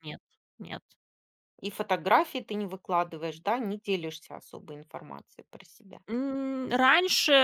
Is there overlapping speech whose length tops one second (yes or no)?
no